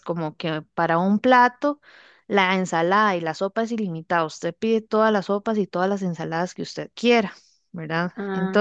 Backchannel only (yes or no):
no